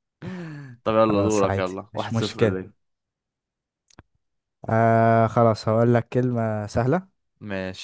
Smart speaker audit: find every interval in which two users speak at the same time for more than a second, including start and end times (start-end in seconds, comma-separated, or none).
0.9-2.6